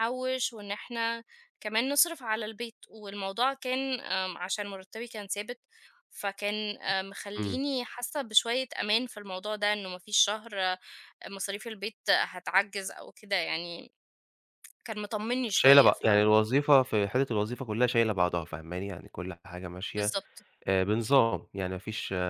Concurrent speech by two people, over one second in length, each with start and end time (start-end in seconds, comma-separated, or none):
none